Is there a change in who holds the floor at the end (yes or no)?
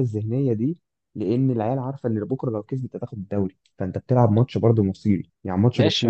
yes